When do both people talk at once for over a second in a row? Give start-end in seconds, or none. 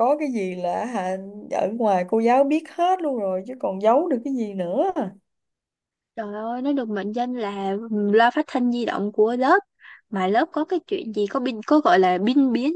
none